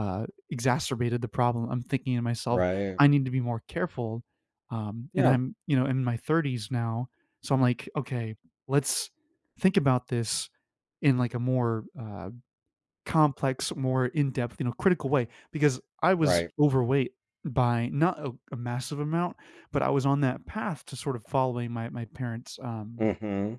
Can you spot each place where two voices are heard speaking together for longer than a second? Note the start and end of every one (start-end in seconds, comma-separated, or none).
none